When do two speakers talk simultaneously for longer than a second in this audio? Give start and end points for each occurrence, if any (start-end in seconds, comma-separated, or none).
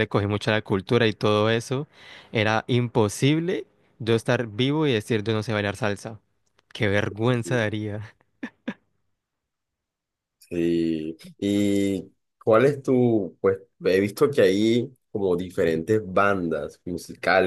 none